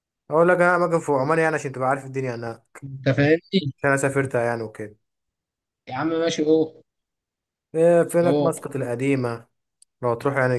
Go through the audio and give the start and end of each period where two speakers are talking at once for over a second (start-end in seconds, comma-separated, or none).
none